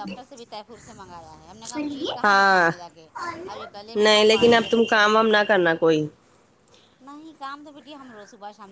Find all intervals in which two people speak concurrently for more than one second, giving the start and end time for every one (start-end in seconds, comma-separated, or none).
4.0-5.5